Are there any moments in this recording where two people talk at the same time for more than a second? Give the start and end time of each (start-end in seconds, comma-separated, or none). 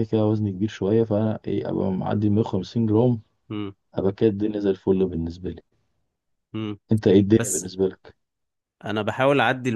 none